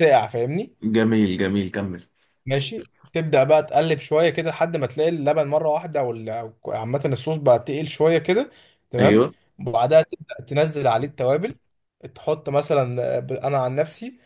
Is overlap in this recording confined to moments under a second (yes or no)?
yes